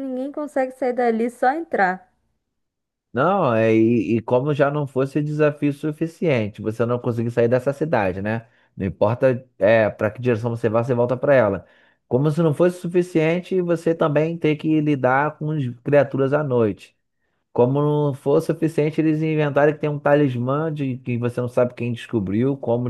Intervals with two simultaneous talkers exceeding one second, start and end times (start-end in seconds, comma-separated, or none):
none